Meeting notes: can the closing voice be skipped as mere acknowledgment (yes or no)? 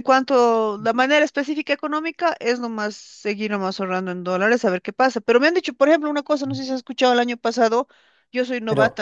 yes